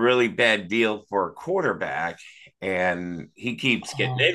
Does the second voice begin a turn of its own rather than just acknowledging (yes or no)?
no